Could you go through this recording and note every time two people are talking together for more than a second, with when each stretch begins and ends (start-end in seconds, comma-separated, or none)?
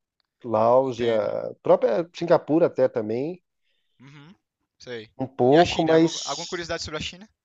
5.5-6.7